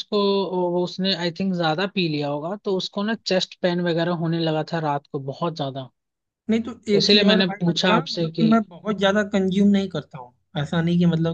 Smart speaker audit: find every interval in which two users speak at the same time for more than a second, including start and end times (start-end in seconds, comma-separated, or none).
6.9-8.5